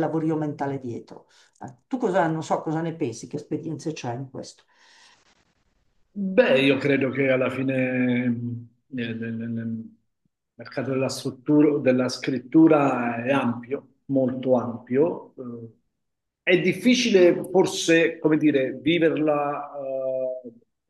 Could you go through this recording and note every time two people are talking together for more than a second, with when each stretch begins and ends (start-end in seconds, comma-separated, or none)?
none